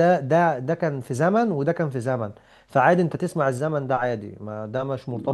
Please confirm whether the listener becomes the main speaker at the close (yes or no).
yes